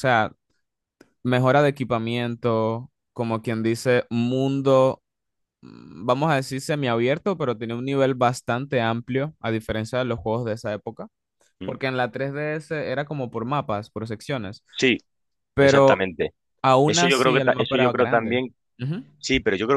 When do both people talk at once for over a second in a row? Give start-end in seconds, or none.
16.9-18.4